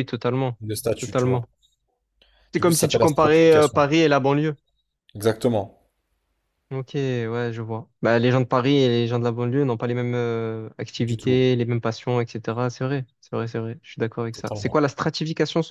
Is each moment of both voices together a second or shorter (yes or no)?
no